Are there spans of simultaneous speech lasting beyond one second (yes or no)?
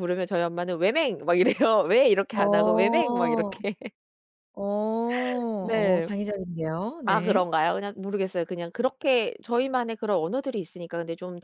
no